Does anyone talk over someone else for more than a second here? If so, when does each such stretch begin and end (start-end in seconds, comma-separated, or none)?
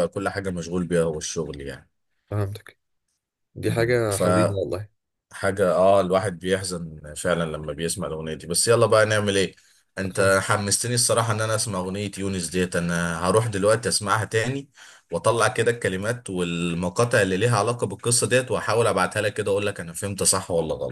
none